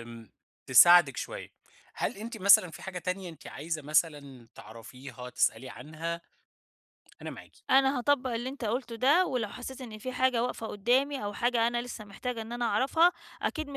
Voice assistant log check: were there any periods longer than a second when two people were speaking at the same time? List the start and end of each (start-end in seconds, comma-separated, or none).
none